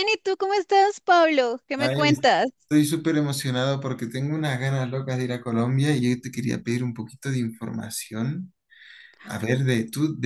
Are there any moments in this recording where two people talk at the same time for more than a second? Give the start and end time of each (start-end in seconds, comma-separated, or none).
none